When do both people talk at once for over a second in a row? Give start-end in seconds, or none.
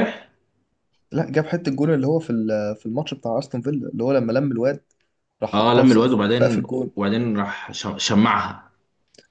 5.5-6.9